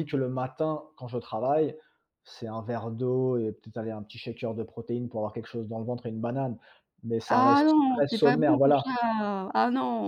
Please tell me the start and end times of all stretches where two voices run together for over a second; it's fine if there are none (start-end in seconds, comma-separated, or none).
7.3-9.0